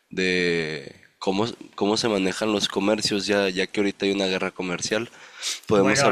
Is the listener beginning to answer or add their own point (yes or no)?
yes